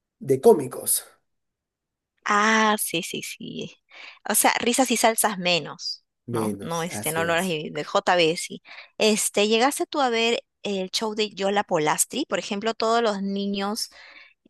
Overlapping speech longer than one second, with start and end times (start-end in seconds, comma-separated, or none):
6.3-7.6